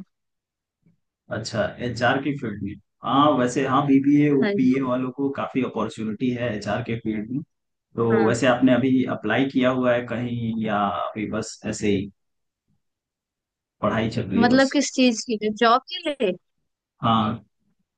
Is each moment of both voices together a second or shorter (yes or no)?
yes